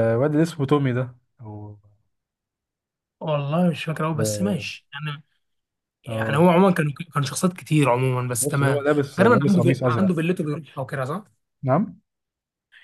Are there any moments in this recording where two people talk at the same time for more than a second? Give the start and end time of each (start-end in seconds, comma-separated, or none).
8.4-10.1